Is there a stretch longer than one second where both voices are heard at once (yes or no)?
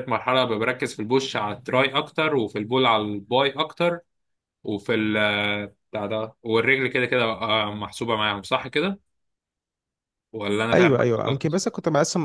no